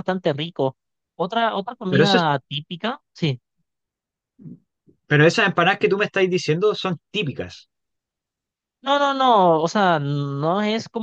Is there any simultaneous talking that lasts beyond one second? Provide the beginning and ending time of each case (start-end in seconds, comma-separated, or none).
none